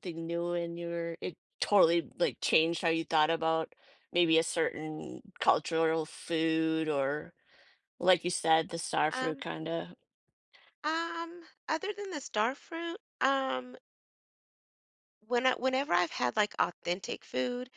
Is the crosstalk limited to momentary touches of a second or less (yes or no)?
yes